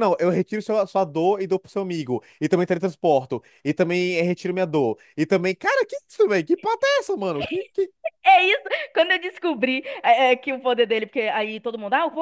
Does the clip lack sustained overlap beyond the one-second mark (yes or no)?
yes